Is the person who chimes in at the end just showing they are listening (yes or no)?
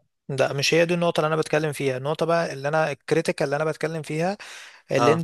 yes